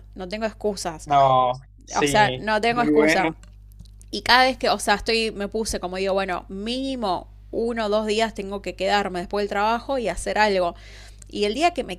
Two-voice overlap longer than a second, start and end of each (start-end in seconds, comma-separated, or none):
1.9-3.3